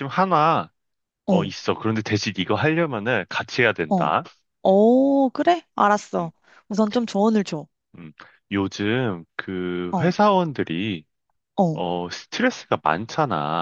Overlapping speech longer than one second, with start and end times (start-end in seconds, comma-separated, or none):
none